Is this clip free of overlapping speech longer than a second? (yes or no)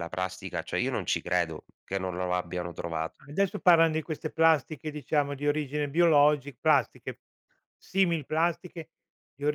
yes